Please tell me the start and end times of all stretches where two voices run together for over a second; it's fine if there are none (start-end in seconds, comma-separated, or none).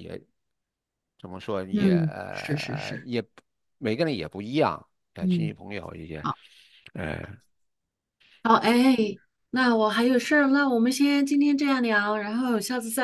1.7-3.1